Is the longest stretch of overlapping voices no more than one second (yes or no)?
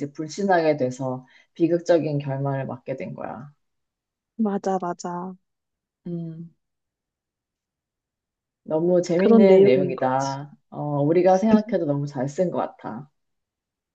no